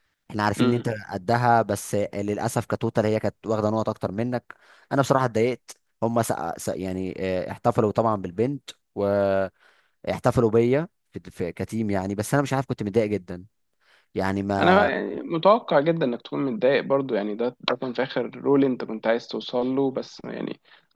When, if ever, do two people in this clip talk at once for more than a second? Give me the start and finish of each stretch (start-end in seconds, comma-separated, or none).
none